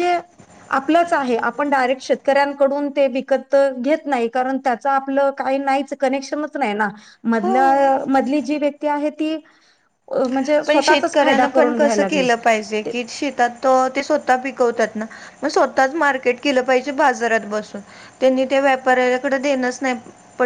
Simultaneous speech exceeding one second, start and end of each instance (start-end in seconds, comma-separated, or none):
10.7-12.3